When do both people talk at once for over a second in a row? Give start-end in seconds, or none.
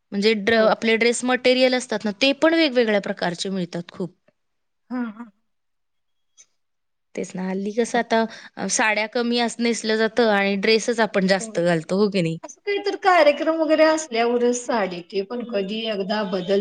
none